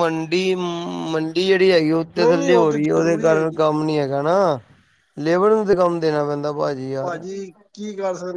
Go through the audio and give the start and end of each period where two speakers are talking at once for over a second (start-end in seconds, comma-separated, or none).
2.2-3.6